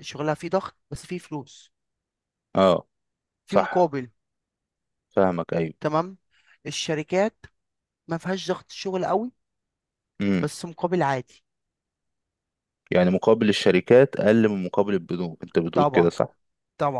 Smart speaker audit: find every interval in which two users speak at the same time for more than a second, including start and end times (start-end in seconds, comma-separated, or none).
none